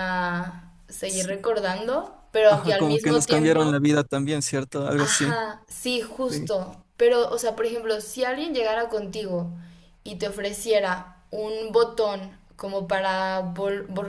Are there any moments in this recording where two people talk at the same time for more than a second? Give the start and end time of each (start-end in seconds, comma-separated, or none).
2.5-3.8